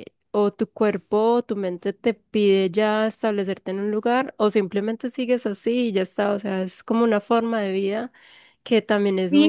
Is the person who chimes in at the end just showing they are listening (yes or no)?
no